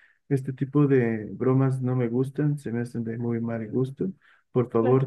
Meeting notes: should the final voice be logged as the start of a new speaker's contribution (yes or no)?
no